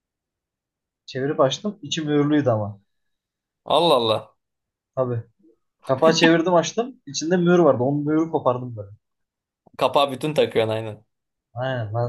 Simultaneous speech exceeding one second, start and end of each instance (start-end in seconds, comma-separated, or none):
none